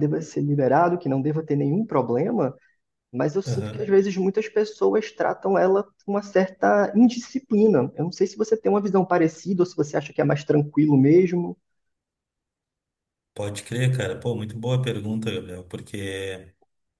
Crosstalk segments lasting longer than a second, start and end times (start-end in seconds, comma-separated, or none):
none